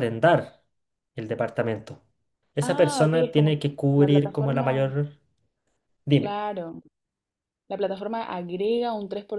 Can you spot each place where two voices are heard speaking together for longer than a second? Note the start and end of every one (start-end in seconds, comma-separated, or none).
2.6-5.0